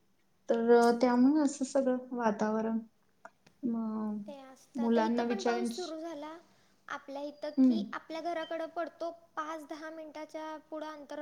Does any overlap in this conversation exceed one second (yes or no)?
no